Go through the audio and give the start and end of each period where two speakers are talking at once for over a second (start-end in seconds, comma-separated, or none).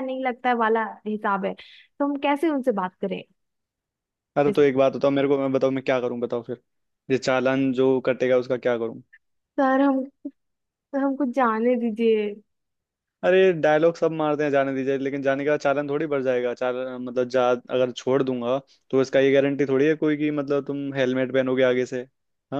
none